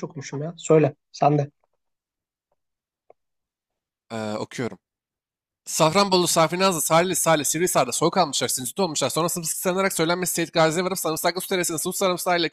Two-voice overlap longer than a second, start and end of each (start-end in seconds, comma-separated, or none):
none